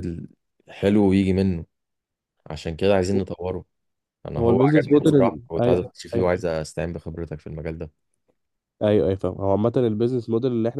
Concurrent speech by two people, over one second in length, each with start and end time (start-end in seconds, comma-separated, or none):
4.4-6.3